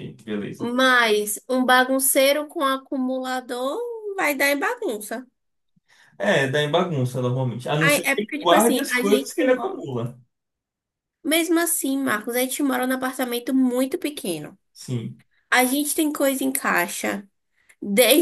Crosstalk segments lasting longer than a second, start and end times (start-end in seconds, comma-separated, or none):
7.8-9.8